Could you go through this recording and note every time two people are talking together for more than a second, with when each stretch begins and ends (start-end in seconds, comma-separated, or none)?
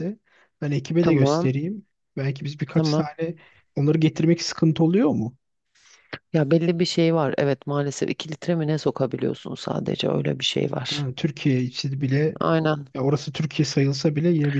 none